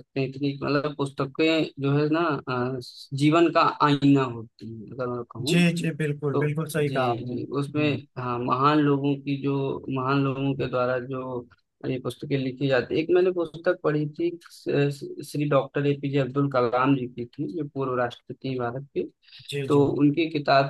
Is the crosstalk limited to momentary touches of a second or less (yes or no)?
no